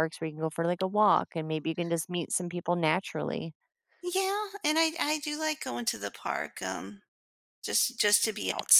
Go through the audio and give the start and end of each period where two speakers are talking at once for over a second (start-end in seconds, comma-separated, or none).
none